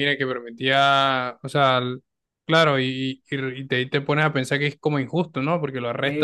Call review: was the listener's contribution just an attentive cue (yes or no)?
no